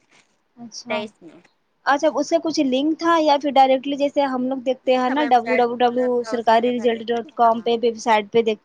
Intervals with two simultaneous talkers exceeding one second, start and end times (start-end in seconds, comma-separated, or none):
4.9-7.7